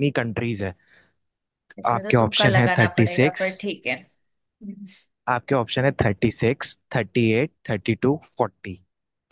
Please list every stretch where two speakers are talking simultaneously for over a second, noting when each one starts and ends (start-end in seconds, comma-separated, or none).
1.9-3.5